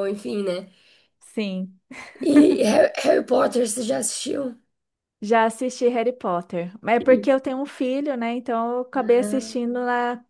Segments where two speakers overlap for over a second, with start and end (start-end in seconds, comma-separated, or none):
none